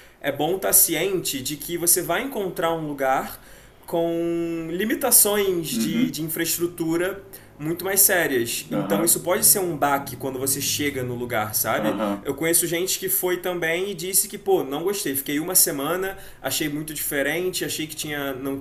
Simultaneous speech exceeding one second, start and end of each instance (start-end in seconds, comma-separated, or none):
none